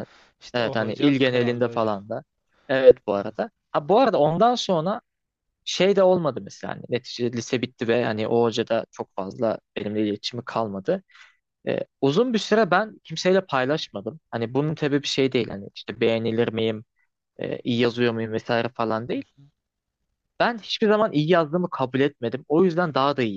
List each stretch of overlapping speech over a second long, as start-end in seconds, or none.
0.5-1.9